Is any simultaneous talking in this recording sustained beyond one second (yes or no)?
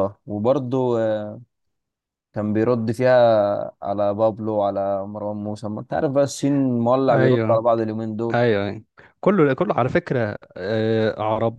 no